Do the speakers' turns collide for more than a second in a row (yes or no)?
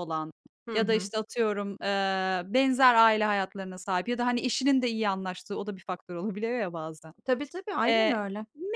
no